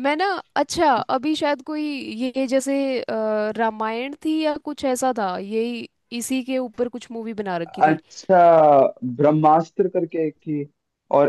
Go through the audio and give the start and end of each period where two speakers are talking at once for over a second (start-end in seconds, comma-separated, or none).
none